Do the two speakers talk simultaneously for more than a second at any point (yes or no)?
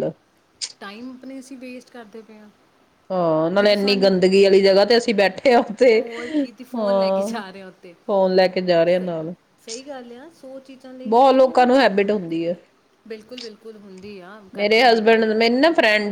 no